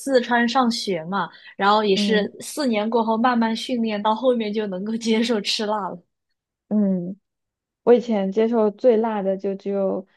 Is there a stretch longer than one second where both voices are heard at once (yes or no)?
no